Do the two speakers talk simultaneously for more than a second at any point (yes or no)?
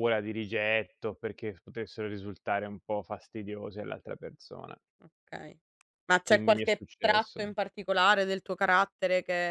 yes